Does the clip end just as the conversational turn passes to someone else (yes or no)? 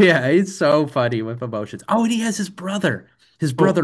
yes